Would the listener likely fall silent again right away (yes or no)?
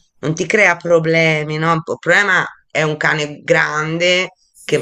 yes